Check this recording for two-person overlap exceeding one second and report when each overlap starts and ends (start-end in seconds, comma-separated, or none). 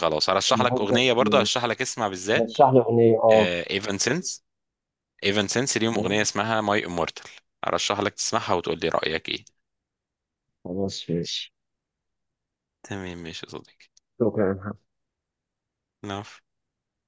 0.5-1.7